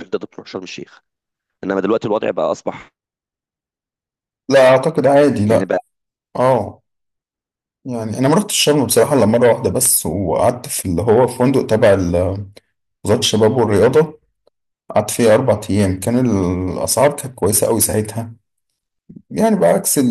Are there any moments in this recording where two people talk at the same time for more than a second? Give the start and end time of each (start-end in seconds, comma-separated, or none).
none